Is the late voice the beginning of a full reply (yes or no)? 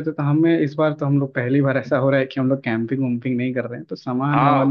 yes